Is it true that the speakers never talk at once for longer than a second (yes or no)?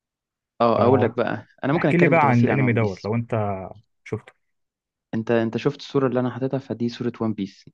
no